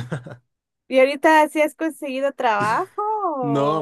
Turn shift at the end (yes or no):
yes